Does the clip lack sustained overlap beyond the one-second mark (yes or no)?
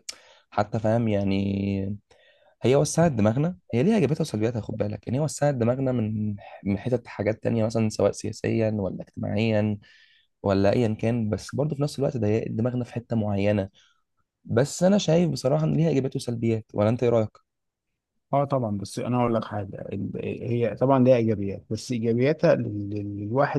yes